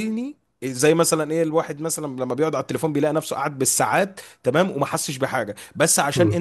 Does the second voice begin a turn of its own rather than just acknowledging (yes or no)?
no